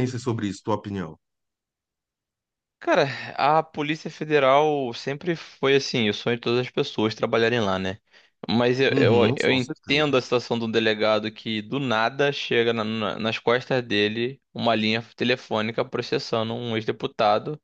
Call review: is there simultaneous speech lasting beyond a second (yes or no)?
yes